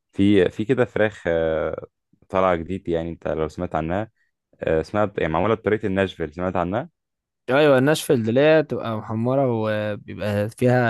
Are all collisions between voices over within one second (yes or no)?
yes